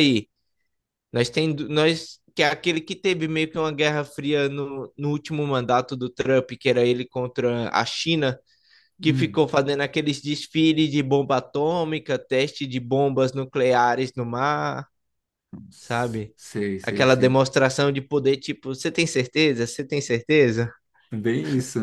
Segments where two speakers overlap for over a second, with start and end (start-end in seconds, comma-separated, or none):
none